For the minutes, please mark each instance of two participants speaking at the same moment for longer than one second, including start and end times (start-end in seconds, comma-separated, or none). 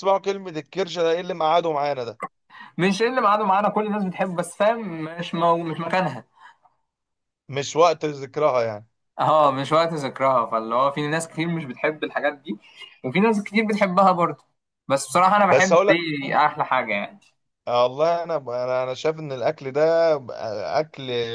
none